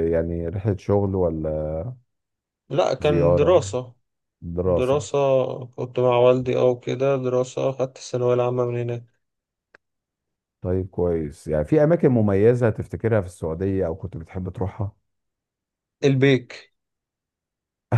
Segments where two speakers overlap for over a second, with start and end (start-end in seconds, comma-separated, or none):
none